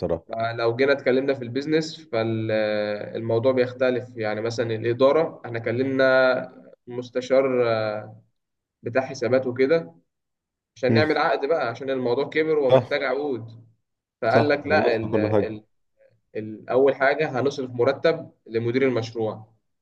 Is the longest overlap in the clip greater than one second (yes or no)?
yes